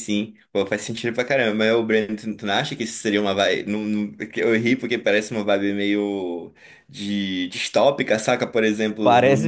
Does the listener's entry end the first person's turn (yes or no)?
no